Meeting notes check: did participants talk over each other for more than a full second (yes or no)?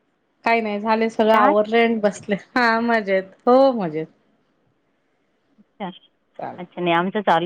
no